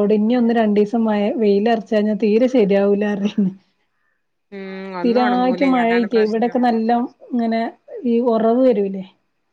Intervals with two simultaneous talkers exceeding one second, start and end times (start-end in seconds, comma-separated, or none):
4.9-6.6